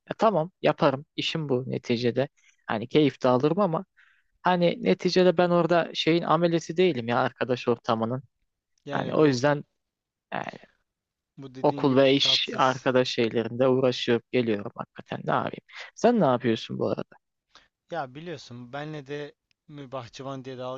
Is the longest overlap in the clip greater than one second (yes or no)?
yes